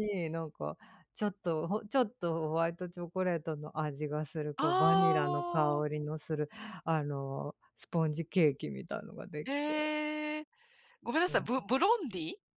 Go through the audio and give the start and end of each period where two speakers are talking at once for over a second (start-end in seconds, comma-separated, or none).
4.6-5.8